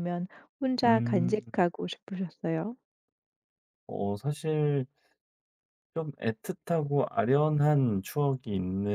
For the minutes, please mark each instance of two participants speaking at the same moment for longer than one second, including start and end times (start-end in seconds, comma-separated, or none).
none